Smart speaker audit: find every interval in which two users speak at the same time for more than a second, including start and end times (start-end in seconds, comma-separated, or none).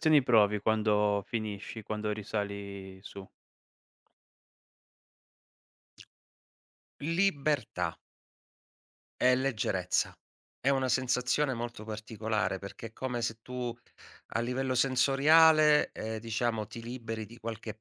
none